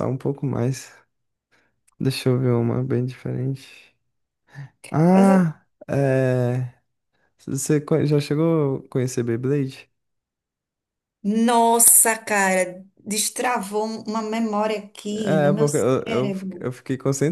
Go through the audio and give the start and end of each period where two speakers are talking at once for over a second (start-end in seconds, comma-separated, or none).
15.1-16.7